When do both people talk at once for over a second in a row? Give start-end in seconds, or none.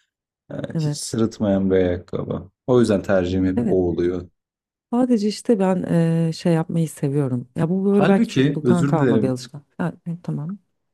7.9-9.4